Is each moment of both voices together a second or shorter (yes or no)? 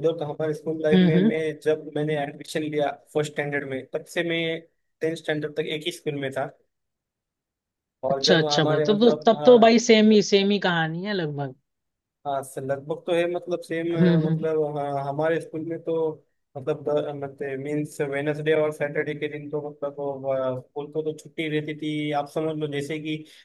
no